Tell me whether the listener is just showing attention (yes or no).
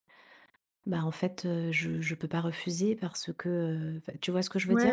no